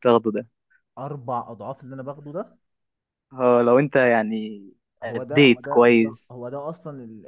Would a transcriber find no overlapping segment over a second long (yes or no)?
no